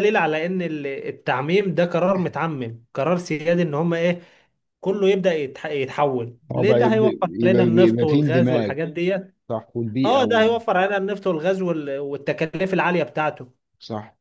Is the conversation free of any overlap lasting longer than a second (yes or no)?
no